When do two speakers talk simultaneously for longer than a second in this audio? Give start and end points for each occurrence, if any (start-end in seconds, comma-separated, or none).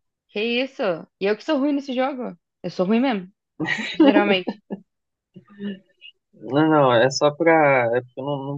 none